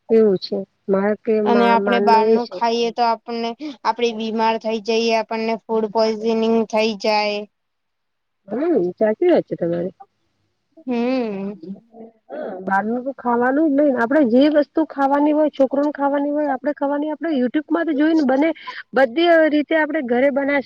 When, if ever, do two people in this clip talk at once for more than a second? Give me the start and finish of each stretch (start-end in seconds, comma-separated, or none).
none